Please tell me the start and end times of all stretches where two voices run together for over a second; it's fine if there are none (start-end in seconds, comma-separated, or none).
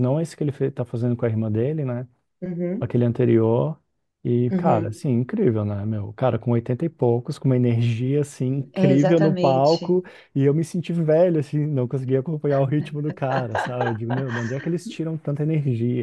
8.7-10.0